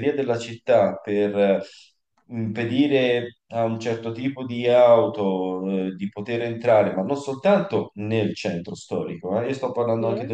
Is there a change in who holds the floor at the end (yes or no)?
no